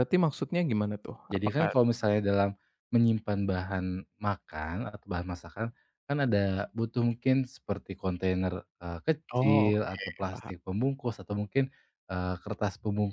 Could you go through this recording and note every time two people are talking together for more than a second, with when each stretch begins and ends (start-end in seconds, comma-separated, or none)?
9.3-10.5